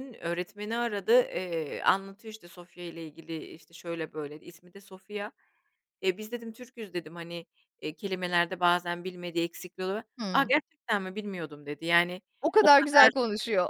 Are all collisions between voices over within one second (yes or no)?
yes